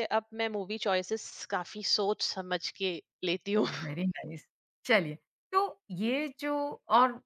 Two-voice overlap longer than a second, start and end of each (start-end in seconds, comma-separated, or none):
none